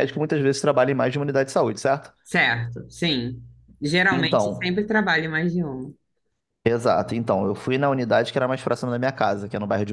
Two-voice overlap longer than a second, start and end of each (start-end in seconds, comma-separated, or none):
none